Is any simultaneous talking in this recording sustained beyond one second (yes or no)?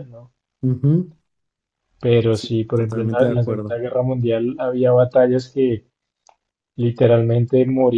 yes